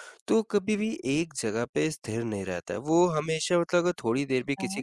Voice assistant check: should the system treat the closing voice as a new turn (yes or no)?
no